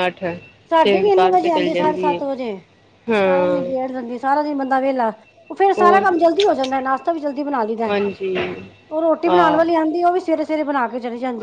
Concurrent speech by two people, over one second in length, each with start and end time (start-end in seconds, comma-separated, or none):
0.8-2.2